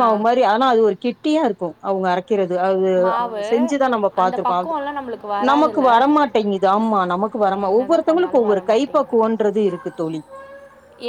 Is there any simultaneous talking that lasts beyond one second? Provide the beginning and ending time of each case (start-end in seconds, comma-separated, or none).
7.6-9.2